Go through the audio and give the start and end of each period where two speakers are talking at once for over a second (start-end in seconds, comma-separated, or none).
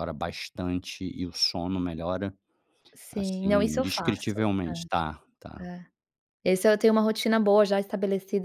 3.1-4.4